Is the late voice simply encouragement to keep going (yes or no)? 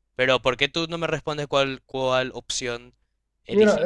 no